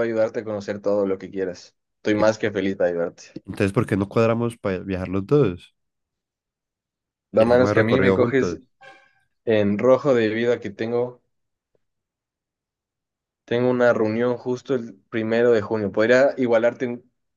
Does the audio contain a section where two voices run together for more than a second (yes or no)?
yes